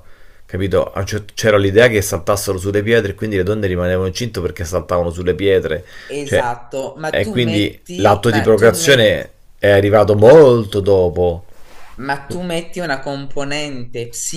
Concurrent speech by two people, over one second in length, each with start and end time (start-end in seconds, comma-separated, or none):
7.1-9.3